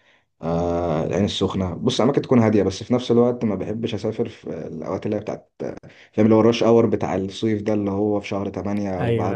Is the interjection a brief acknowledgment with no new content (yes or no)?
yes